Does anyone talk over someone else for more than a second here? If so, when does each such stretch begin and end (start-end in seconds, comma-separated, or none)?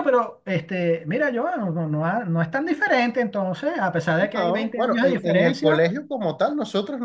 4.3-5.9